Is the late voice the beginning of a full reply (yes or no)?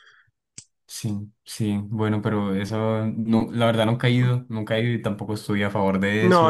yes